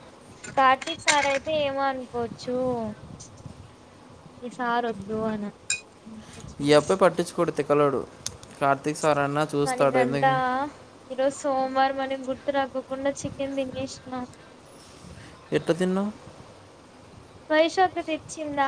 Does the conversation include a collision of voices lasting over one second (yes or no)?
no